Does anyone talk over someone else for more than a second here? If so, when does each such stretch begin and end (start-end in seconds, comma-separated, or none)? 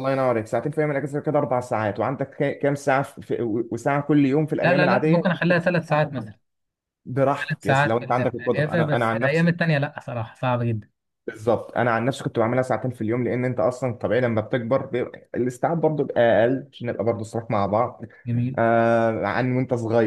4.6-6.3, 7.5-9.6